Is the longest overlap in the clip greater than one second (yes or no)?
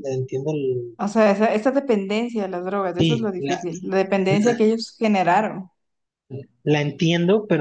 no